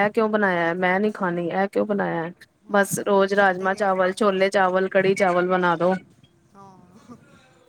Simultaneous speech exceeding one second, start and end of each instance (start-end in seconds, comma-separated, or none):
2.8-4.2